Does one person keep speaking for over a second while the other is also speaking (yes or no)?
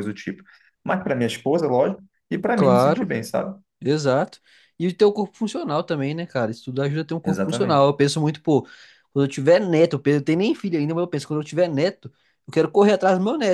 no